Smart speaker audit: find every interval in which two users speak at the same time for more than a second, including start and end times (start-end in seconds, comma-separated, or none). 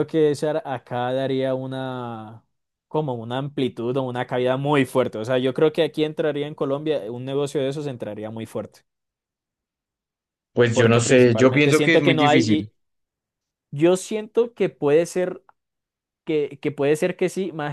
10.7-12.7